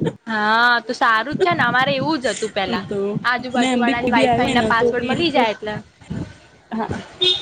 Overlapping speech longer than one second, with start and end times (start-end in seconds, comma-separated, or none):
3.6-5.4